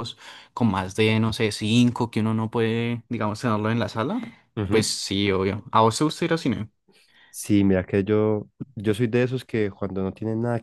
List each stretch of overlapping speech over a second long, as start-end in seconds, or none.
none